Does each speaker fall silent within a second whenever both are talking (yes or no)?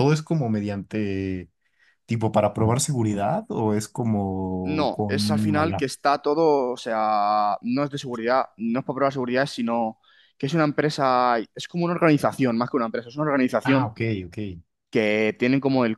no